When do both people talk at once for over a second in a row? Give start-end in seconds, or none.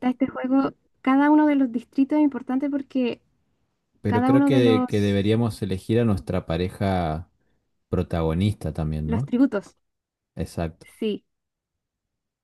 4.1-5.3